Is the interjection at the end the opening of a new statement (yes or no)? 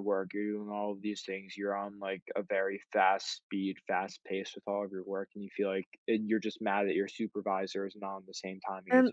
yes